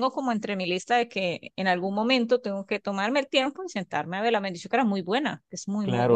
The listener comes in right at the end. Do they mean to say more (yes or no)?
yes